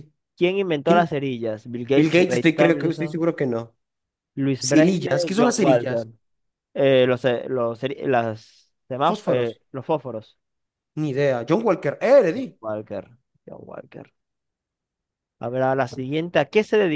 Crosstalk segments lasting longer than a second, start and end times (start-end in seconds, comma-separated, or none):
1.9-3.2, 4.6-6.1